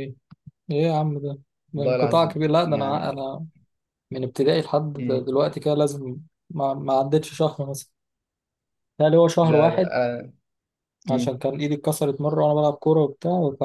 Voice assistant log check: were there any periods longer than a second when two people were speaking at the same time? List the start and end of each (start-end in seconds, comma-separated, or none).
1.8-3.3